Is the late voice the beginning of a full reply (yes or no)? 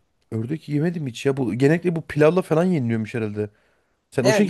yes